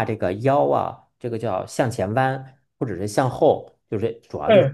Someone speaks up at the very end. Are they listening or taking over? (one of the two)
listening